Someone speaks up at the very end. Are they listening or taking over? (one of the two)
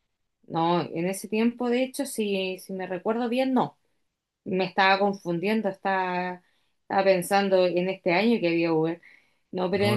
listening